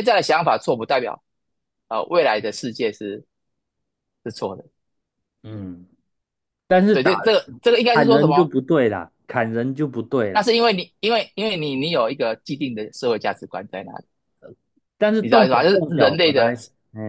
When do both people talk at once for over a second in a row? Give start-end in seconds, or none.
15.2-16.5